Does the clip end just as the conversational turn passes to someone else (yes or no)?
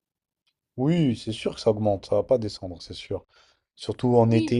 no